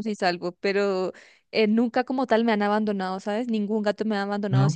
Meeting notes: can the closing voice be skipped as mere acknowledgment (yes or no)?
yes